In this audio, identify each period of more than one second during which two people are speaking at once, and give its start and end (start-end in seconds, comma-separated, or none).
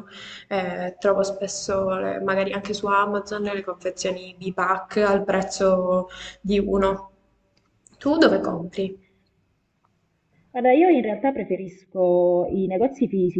none